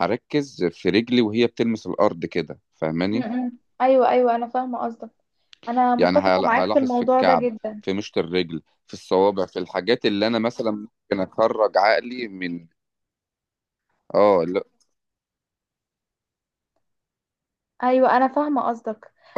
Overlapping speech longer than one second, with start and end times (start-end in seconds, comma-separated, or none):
6.0-7.8